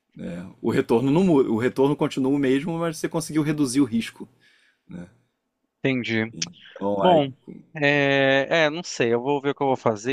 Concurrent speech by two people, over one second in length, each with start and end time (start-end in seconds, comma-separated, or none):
none